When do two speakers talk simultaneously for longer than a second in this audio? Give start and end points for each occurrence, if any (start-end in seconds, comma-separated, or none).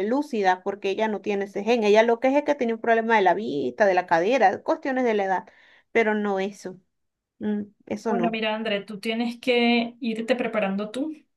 none